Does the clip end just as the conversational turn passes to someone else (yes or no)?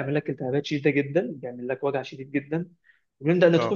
no